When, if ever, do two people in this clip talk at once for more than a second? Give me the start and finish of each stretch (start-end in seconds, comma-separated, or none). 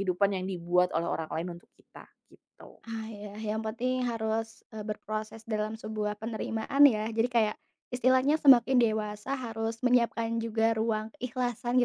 none